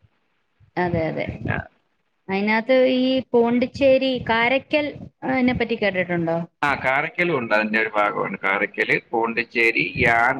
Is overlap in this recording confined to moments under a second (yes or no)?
yes